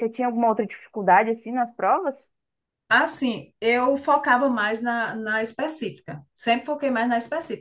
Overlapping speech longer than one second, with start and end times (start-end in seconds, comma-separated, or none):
none